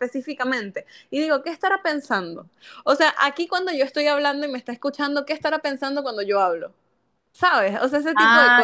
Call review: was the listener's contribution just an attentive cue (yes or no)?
no